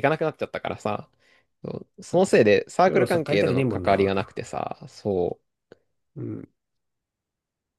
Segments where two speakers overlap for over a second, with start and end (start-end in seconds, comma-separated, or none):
2.1-4.1